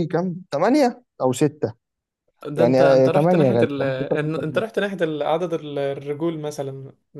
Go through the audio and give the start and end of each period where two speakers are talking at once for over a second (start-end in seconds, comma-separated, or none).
2.5-3.9